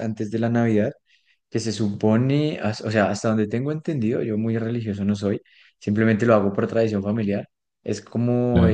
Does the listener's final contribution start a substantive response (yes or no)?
no